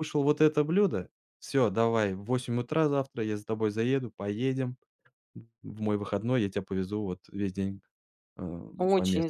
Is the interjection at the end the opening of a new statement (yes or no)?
yes